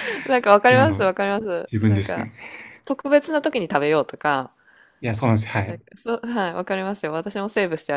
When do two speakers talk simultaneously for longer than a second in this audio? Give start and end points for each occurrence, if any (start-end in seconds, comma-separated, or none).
none